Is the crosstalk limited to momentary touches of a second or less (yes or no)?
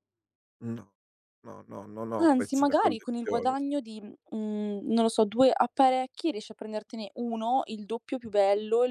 no